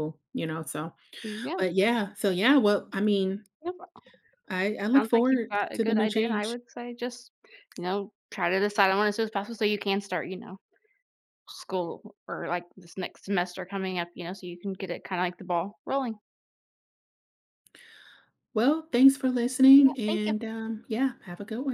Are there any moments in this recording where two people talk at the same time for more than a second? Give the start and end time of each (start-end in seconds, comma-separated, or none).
5.0-6.5